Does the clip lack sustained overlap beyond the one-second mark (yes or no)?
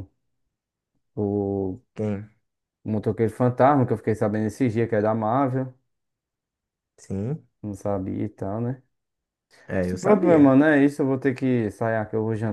yes